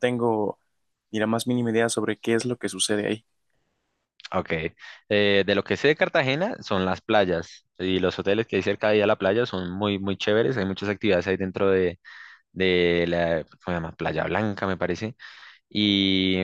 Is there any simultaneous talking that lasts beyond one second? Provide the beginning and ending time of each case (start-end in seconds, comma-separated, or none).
none